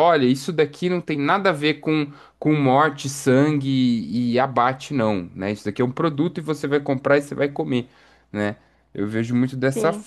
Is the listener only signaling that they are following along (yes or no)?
yes